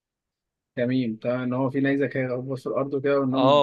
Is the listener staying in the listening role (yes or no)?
no